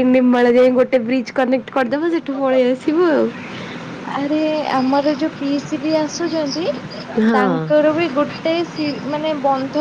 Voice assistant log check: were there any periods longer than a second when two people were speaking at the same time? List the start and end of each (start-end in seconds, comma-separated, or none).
none